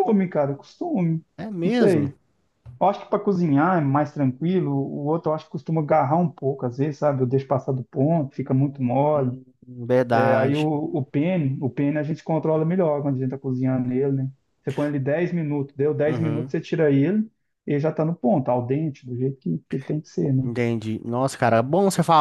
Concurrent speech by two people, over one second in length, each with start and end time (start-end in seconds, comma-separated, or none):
none